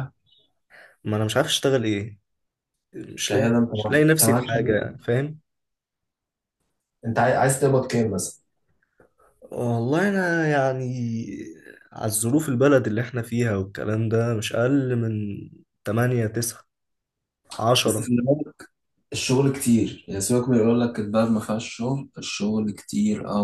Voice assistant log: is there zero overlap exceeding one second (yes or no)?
no